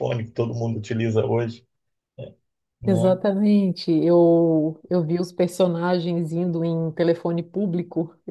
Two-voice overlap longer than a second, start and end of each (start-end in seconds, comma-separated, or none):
none